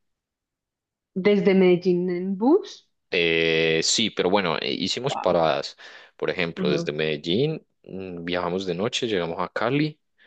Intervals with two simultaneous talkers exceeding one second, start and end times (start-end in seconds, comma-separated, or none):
none